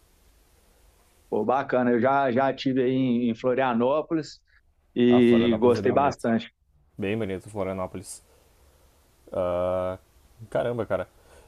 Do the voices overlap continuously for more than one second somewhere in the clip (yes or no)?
yes